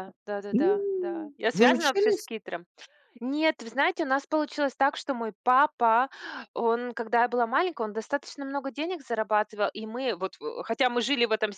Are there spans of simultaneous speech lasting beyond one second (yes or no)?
yes